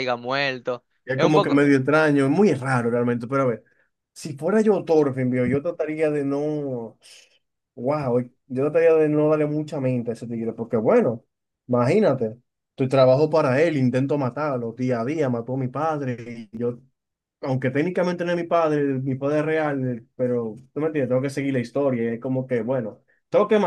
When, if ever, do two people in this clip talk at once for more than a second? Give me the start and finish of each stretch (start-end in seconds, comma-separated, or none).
none